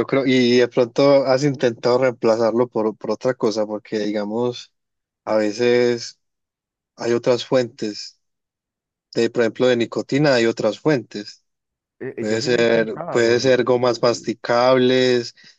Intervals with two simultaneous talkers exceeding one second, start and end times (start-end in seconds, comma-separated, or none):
12.2-14.3